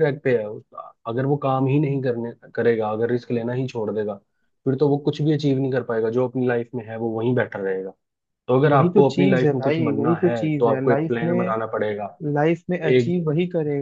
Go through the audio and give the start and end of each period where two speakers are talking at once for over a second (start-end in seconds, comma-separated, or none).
8.7-11.6